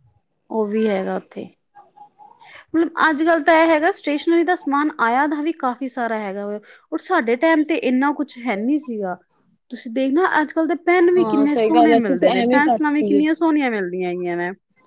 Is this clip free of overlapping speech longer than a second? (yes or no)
no